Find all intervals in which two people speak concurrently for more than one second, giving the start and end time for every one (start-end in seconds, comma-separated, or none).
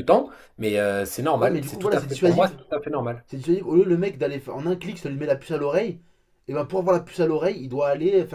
1.4-2.6